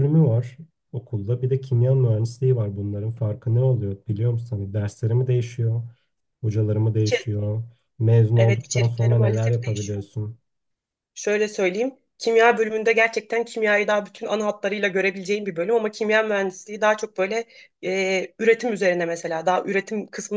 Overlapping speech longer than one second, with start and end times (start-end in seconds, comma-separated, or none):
8.4-10.1